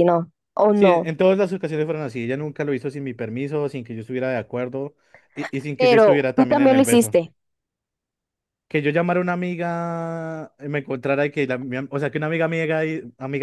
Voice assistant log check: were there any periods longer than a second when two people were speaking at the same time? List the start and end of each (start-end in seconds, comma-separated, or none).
5.8-7.2